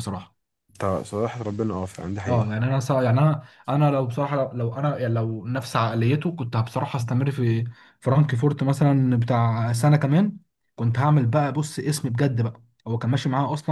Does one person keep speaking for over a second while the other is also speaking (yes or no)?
no